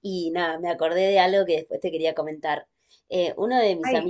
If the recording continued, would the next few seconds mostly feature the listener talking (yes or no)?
no